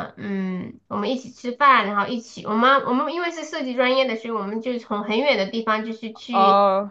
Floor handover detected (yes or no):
no